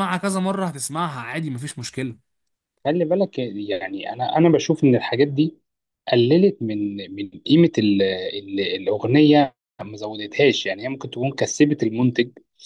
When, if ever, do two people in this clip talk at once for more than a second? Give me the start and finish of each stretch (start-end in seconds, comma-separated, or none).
none